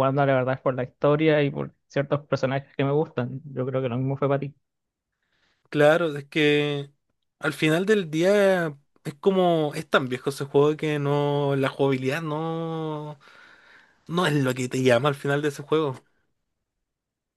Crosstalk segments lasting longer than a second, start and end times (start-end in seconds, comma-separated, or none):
none